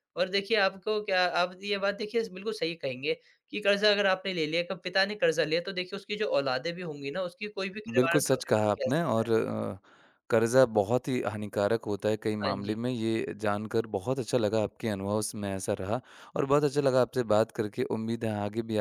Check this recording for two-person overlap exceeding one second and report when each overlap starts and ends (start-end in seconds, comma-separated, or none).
8.0-9.2